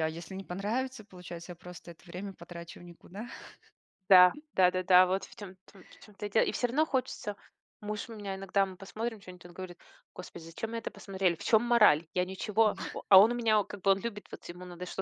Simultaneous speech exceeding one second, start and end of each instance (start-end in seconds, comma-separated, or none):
none